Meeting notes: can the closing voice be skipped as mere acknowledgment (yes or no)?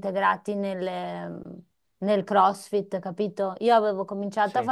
yes